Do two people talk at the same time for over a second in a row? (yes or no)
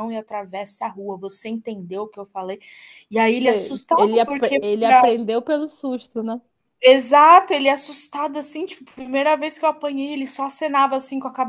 yes